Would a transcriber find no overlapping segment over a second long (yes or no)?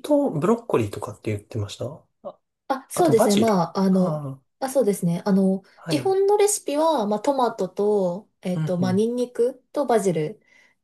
no